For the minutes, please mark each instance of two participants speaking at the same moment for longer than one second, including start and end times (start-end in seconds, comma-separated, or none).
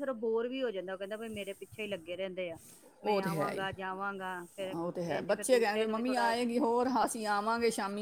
none